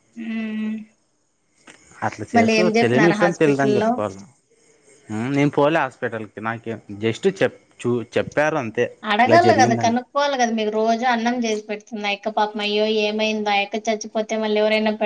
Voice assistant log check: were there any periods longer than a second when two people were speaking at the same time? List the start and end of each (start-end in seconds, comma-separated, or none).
2.4-3.9